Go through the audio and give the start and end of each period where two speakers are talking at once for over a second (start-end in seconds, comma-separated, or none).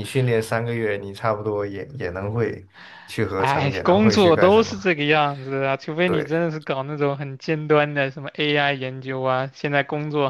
3.4-4.7